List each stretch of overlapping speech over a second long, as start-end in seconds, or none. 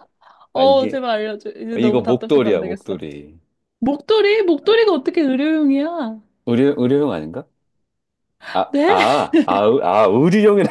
1.8-3.0